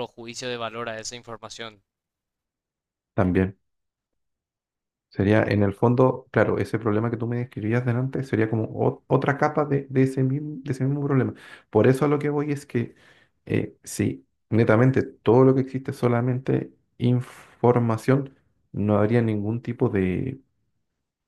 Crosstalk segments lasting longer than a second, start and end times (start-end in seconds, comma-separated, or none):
none